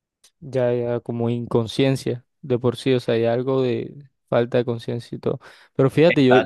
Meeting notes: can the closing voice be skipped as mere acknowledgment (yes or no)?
yes